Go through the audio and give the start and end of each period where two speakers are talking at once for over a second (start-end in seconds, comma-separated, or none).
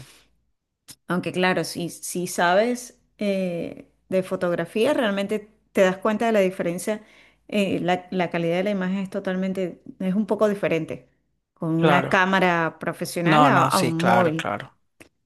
13.2-14.5